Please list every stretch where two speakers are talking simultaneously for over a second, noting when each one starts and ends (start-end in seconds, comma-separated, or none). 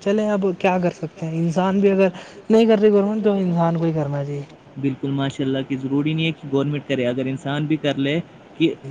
none